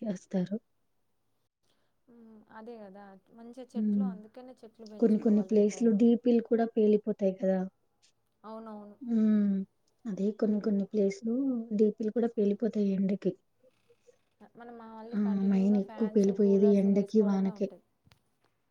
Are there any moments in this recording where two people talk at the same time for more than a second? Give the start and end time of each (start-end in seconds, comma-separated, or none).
15.2-17.7